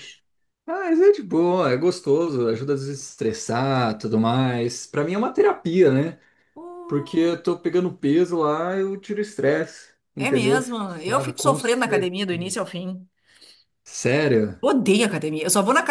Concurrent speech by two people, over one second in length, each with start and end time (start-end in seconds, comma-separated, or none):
10.2-12.5